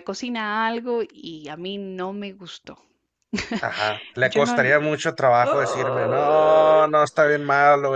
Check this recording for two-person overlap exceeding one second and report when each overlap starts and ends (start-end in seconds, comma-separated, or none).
5.4-6.8